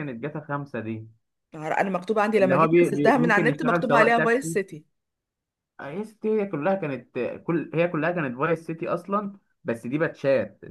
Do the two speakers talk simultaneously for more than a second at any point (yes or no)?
yes